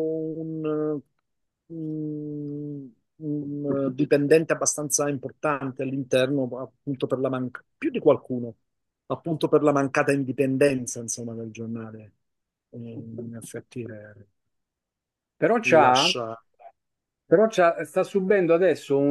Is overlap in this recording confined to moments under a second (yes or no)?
yes